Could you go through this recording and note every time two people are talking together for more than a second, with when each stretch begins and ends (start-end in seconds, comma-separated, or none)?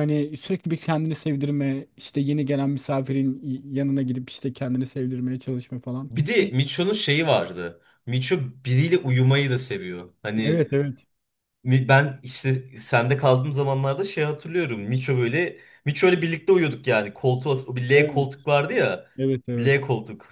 none